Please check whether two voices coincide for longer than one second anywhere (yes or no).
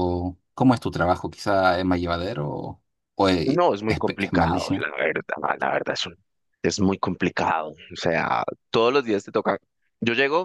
yes